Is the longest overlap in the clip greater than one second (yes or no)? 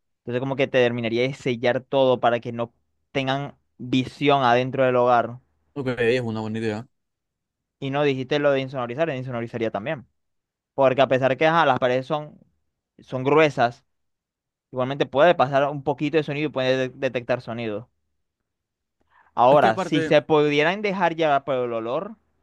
no